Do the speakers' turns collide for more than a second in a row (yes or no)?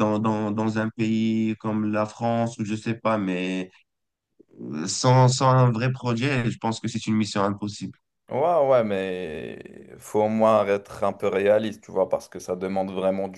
no